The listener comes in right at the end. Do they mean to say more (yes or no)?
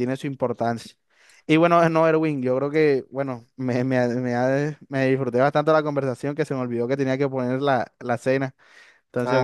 yes